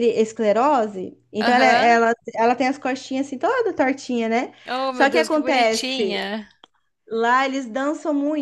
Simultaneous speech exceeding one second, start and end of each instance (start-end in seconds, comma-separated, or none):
4.9-6.2